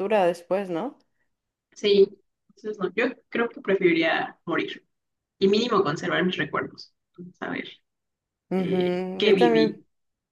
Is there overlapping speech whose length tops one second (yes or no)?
yes